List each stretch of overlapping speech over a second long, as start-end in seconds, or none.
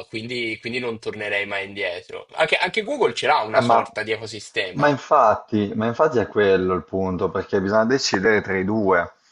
none